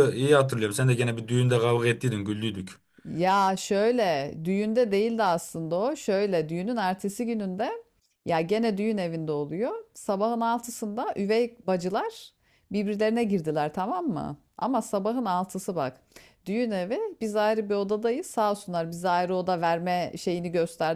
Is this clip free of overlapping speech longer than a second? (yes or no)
yes